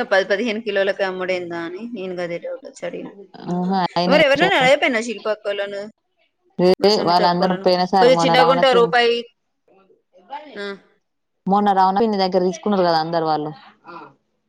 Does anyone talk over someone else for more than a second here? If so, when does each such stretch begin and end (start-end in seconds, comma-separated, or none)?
7.1-8.9